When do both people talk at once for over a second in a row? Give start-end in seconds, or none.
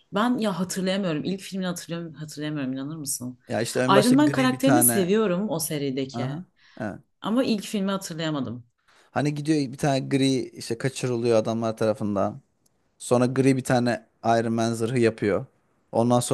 3.9-5.1